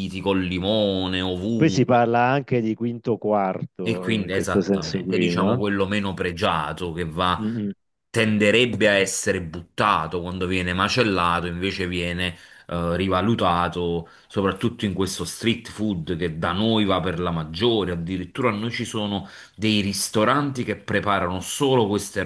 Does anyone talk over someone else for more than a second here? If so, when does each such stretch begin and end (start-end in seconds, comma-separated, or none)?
3.8-5.7